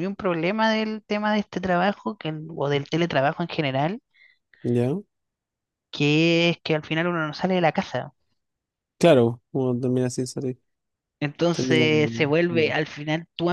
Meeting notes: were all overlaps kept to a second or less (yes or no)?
no